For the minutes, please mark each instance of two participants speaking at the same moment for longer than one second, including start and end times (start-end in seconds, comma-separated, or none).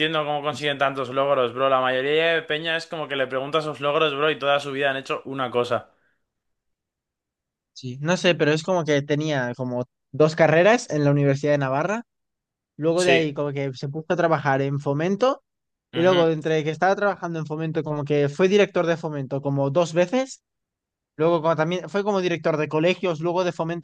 none